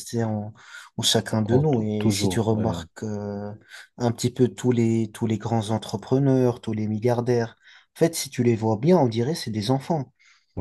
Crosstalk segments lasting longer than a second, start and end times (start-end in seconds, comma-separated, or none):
1.3-2.7